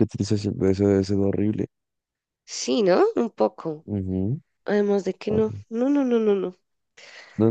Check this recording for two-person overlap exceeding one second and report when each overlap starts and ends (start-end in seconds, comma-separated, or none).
none